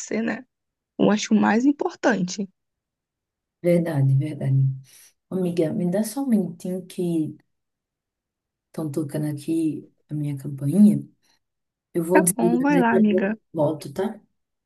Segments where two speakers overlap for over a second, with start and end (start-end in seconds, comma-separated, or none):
12.1-13.4